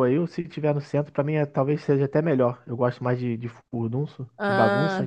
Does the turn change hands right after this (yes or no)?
yes